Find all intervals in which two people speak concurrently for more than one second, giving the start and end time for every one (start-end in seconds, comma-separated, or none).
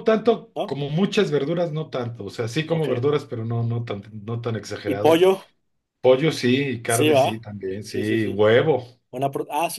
6.8-8.4